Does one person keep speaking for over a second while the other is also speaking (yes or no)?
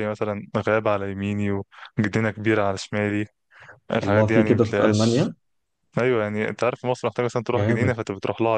yes